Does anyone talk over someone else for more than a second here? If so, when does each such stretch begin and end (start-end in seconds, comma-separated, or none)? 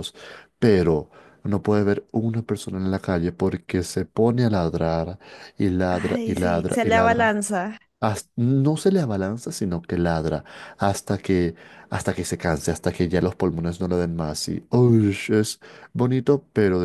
5.9-7.3